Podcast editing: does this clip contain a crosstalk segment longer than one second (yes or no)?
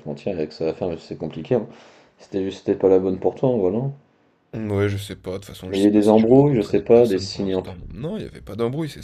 yes